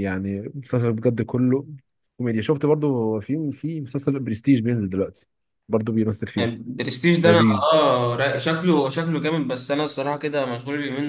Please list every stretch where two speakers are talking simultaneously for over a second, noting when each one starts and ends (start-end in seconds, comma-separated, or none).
none